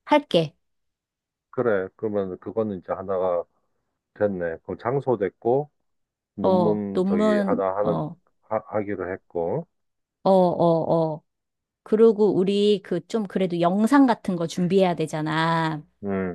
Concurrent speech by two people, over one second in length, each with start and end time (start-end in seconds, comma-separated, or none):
6.4-8.0